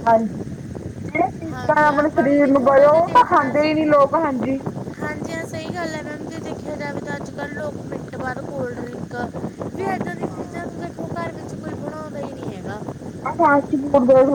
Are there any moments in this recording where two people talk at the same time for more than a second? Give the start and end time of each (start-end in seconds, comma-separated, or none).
1.5-3.7